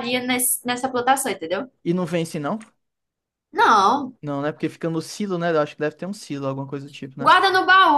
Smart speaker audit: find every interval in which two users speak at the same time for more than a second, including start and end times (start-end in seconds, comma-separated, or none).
none